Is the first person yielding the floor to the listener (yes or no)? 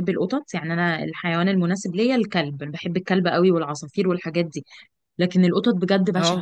no